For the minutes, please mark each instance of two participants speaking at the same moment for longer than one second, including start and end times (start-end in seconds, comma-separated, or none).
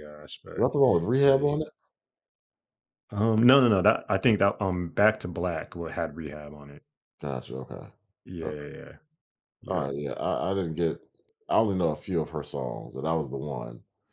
none